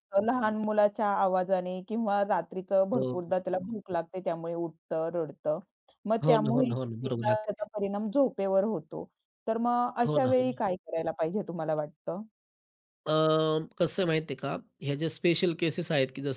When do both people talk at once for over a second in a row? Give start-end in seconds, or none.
6.2-7.6